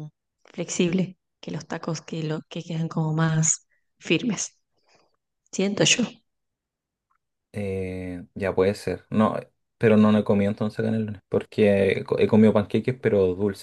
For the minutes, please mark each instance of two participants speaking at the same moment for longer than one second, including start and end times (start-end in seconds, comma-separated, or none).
none